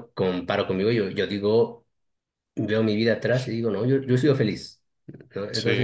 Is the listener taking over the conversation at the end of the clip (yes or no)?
no